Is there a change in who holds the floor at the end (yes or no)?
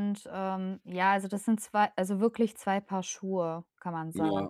yes